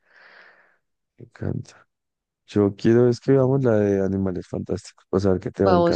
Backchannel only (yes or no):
no